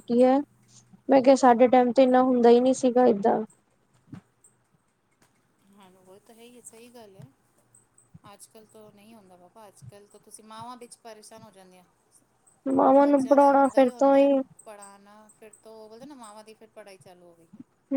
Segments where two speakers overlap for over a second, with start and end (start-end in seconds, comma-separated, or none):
12.8-14.3